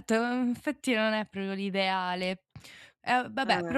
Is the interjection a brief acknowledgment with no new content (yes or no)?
yes